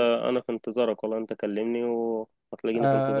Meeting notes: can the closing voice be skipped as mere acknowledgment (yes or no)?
no